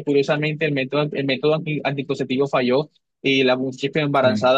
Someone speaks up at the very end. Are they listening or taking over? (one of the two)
listening